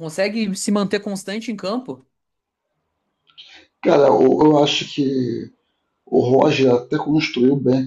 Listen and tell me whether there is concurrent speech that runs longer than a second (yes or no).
no